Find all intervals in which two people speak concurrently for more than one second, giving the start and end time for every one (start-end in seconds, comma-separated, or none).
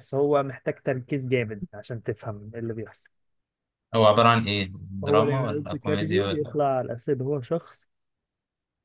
5.0-6.6